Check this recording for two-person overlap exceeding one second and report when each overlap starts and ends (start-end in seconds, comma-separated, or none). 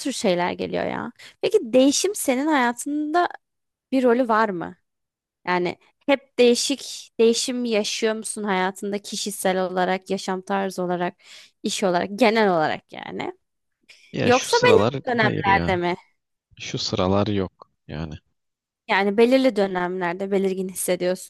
14.2-15.8